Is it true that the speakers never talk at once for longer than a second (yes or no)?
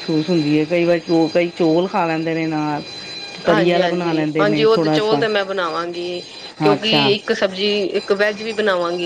no